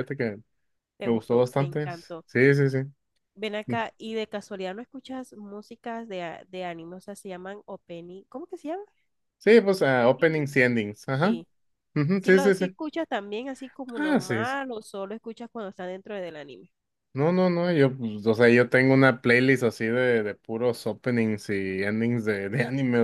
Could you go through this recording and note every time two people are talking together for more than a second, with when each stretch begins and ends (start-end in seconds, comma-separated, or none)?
1.0-2.2